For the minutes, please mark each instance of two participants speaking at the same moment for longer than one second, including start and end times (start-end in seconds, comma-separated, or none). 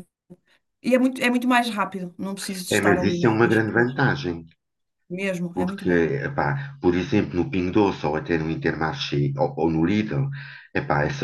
2.7-3.9